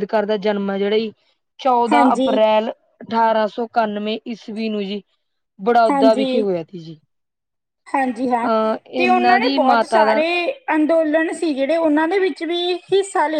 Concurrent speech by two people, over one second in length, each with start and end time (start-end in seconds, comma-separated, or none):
9.0-10.2